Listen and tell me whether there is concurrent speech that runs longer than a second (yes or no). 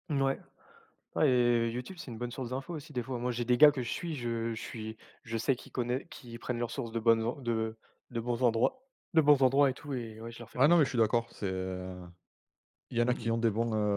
no